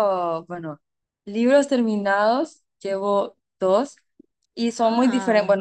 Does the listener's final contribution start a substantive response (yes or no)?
no